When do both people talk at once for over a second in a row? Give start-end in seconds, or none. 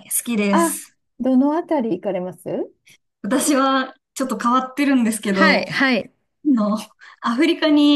none